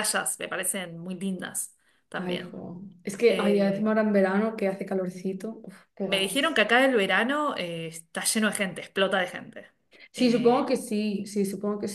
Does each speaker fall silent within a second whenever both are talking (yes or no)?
yes